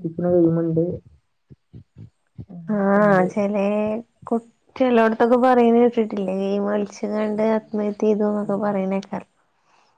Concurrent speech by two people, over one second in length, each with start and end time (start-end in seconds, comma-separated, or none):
none